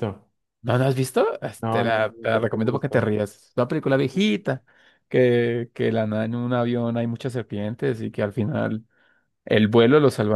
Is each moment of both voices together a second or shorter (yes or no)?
no